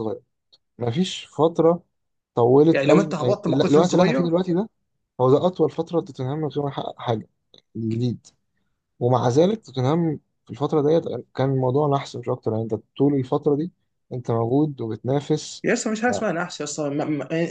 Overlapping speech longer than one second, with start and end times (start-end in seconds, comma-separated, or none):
2.7-4.2